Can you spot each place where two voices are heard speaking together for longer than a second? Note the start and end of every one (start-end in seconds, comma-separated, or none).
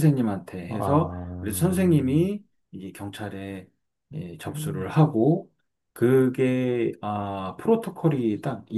0.7-2.3